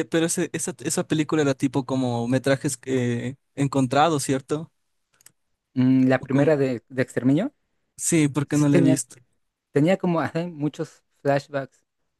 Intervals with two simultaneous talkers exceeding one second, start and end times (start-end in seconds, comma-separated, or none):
none